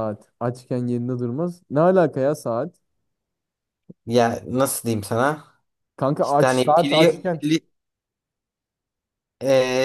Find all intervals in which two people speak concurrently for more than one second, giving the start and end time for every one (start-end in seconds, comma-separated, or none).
6.2-7.4